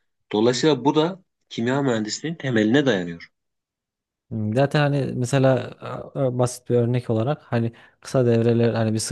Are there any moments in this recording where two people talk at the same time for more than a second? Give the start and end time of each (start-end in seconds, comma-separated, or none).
none